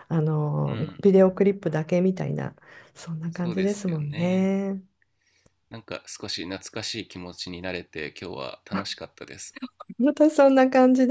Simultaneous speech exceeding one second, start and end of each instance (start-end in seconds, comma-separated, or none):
3.3-4.5